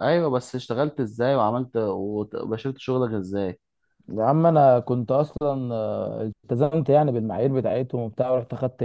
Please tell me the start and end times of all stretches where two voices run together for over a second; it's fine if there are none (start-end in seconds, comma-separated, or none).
none